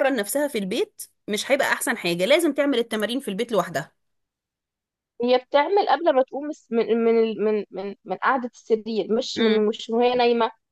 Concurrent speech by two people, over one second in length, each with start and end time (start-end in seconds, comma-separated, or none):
none